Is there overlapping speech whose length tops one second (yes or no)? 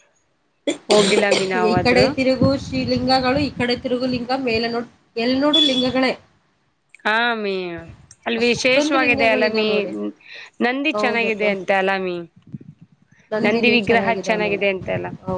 yes